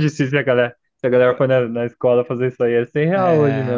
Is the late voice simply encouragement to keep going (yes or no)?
no